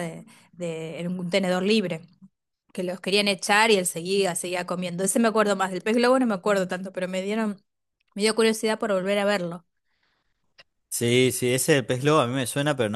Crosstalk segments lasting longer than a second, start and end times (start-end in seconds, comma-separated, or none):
none